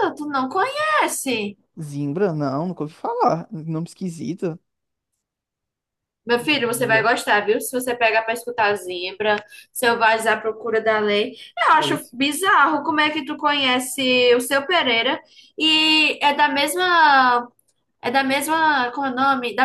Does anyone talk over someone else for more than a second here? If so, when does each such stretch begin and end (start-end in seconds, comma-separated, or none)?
none